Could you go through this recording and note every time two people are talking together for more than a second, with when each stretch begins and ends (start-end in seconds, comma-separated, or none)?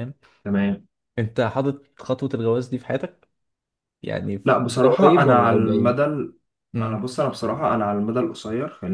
4.5-6.0